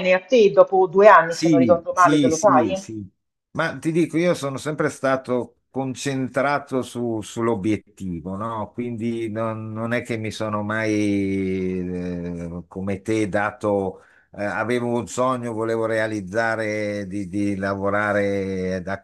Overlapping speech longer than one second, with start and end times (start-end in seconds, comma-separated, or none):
1.3-2.8